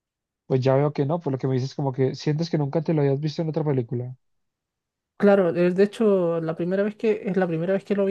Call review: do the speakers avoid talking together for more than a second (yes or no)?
yes